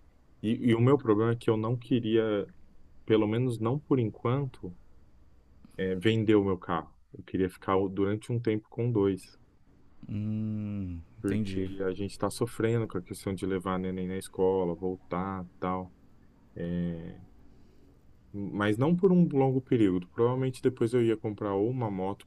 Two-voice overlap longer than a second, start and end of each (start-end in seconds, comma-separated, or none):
none